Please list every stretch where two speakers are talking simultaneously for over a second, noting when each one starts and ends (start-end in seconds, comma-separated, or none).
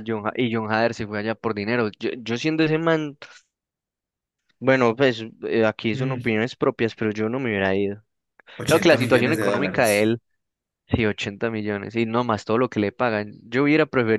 8.6-10.1